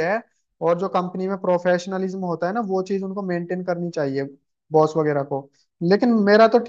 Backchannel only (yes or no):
yes